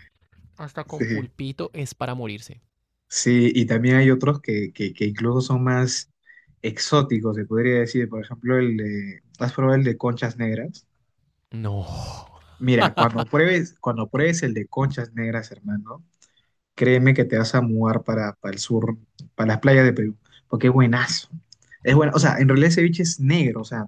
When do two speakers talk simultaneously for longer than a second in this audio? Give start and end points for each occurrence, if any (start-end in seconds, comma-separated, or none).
none